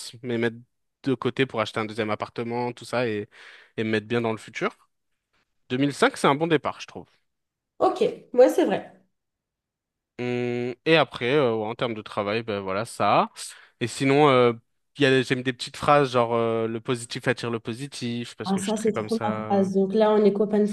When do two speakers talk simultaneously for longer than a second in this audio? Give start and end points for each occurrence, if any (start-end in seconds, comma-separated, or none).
18.4-19.7